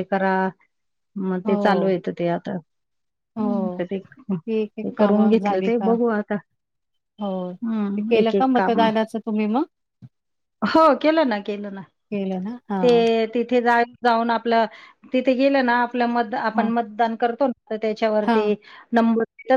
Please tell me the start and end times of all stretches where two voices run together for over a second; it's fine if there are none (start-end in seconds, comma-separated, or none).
4.5-5.9, 7.5-8.8